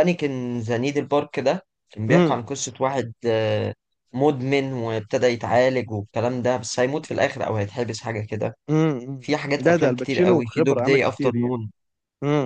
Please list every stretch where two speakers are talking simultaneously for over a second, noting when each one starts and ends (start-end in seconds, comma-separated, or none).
9.2-11.6